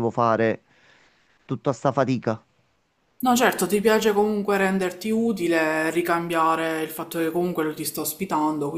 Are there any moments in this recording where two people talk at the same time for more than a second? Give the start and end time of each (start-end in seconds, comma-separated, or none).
none